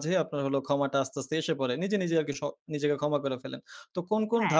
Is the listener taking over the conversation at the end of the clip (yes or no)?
no